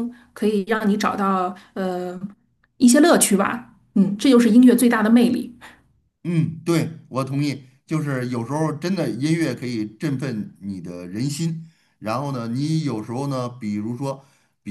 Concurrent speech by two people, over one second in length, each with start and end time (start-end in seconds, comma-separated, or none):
none